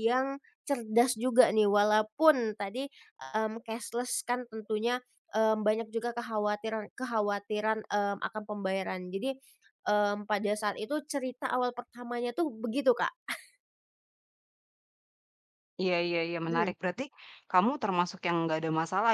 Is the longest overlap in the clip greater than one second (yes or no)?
no